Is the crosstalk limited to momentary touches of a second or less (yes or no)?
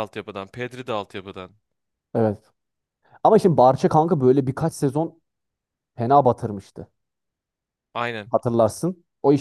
yes